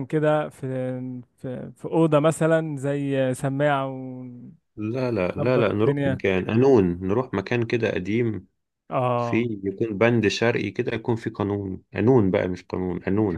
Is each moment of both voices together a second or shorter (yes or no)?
yes